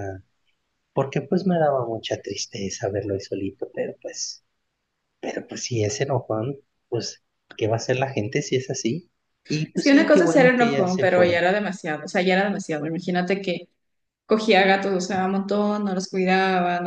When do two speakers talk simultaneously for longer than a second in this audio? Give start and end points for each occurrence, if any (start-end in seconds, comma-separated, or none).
9.7-11.4